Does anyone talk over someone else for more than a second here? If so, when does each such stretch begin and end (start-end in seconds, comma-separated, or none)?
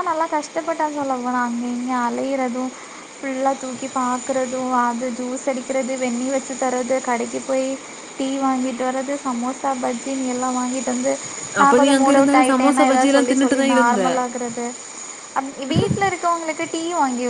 11.6-14.0